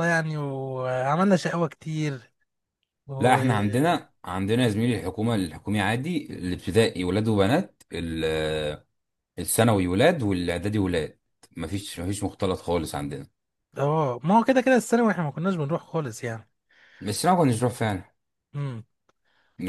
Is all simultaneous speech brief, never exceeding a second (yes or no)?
yes